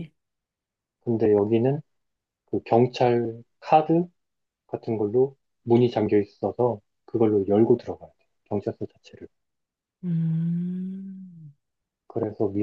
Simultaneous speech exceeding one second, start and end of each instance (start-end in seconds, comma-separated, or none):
none